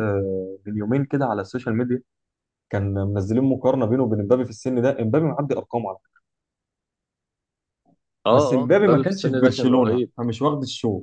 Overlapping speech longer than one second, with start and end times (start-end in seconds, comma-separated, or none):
8.3-10.1